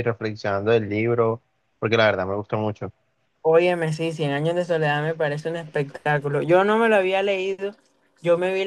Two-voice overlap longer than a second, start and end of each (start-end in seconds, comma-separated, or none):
none